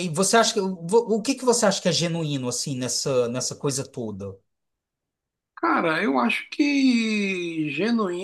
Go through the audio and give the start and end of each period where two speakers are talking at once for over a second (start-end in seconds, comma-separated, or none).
none